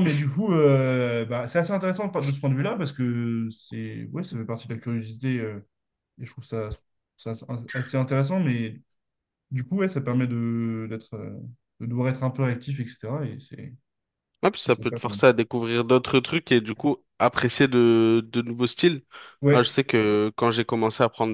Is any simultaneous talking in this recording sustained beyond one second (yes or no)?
no